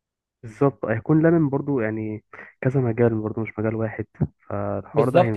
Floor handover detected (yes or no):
yes